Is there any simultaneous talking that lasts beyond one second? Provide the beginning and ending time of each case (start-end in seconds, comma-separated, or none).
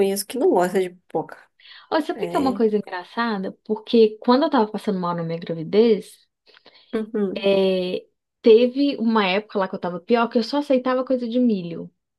none